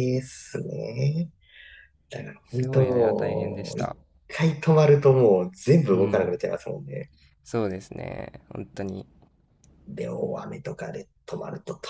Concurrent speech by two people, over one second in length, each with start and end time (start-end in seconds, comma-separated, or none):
2.4-3.9